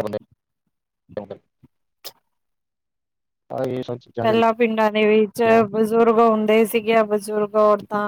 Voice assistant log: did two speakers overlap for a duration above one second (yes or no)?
no